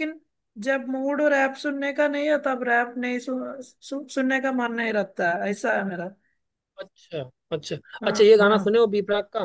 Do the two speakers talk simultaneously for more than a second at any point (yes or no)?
no